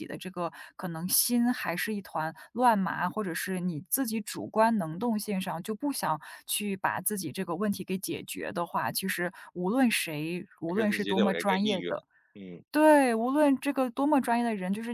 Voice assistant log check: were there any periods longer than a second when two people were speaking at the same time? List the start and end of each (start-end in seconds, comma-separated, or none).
10.7-11.9